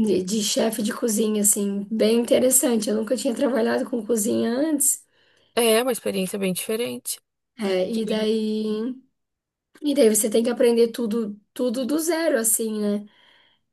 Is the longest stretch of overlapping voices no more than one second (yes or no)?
yes